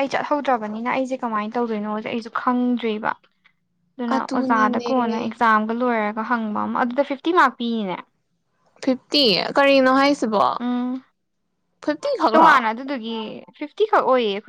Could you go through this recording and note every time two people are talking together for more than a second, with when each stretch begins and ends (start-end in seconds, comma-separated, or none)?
4.1-5.3